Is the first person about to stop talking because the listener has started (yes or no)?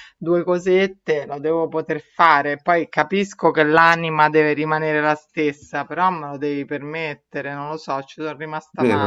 yes